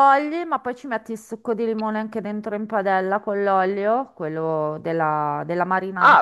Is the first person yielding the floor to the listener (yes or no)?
yes